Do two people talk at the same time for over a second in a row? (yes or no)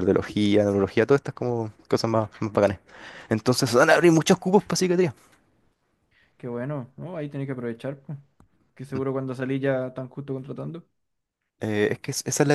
no